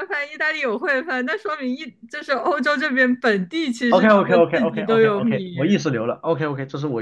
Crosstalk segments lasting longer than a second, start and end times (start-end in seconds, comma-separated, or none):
3.9-5.5